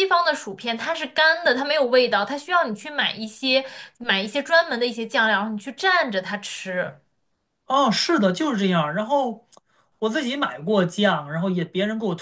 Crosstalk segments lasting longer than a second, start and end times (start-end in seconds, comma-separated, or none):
none